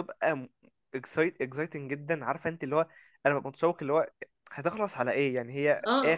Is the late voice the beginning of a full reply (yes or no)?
yes